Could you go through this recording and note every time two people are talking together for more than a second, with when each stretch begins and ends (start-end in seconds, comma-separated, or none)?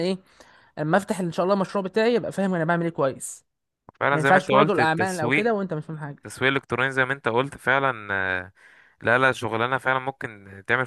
4.1-5.5